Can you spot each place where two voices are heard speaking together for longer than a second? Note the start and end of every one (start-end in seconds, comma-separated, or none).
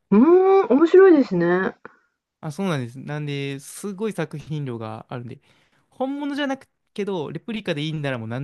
none